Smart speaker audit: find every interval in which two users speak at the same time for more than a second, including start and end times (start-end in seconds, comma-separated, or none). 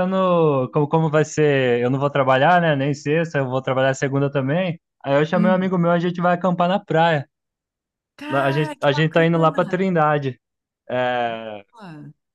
8.3-9.9